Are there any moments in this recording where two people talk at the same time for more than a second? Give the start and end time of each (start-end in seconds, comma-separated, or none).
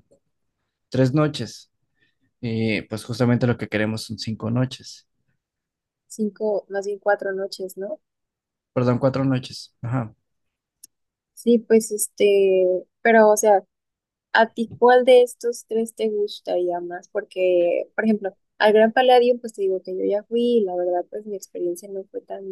none